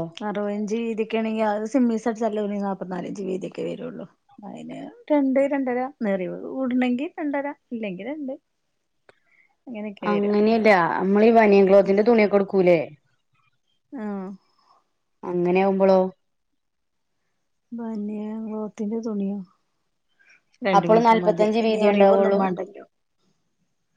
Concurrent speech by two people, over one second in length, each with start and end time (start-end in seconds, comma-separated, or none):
20.8-22.4